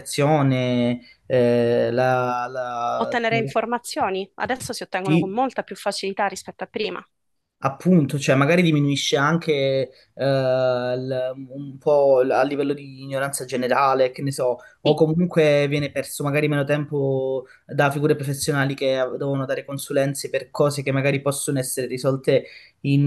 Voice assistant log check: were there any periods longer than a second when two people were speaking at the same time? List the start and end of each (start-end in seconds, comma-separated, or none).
none